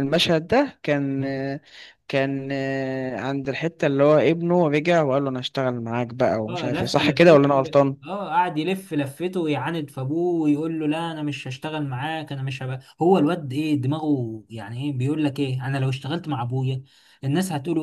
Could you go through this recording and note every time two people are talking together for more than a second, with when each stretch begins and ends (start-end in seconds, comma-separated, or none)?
6.5-8.0